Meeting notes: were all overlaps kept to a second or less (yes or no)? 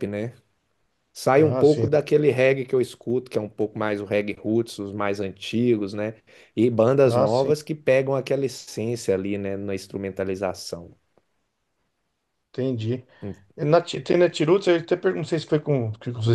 yes